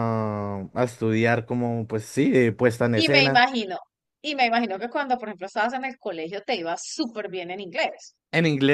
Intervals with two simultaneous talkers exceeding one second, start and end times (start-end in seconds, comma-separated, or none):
none